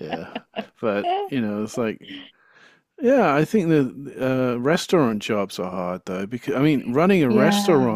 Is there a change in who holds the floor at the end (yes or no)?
no